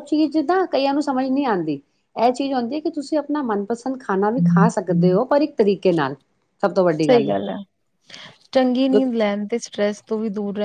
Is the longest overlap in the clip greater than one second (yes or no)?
no